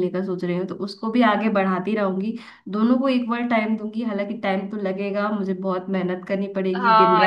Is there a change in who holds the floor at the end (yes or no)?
yes